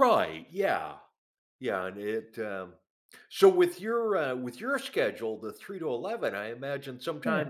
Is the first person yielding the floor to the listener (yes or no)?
no